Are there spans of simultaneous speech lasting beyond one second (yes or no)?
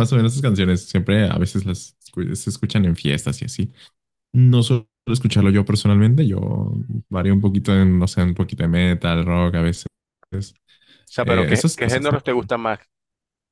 yes